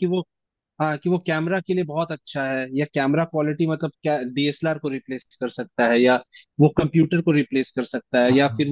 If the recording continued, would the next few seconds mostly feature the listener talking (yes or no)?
no